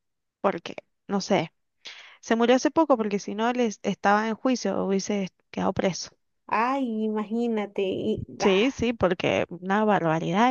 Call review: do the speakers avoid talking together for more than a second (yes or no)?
yes